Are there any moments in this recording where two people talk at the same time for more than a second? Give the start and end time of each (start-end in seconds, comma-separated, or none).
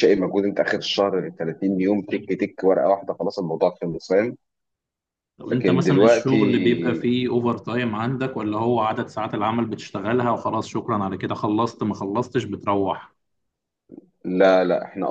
5.5-7.0